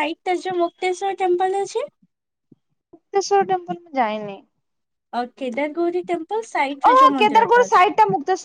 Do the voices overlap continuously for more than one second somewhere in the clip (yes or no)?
no